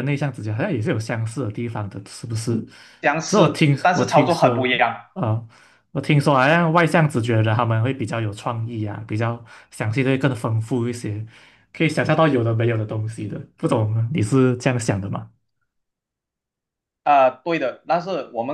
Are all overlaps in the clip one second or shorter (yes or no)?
no